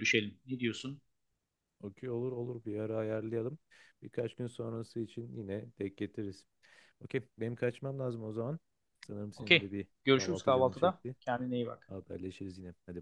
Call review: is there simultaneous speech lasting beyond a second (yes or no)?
yes